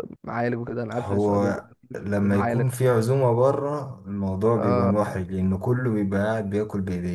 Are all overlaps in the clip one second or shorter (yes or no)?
no